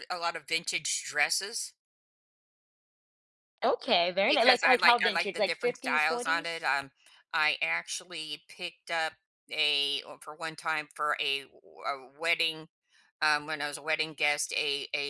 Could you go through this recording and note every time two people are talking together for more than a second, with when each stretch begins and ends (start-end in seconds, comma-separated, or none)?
4.3-6.7